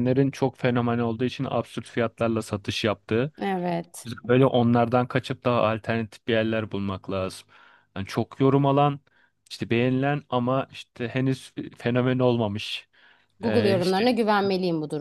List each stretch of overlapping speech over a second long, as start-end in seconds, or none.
none